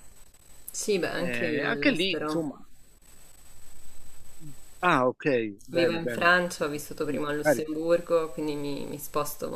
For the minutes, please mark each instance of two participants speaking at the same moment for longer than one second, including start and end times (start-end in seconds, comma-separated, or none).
1.1-2.4